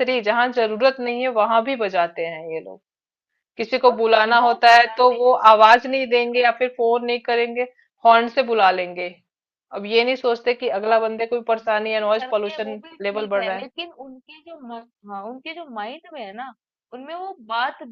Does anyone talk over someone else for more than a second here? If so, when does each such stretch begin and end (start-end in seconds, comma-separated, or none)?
3.9-6.6, 10.9-13.7